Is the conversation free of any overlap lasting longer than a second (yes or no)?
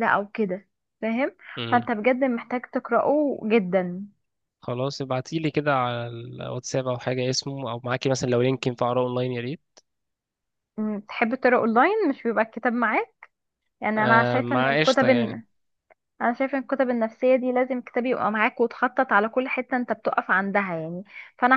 no